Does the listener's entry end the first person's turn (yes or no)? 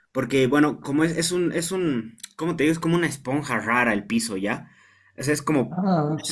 no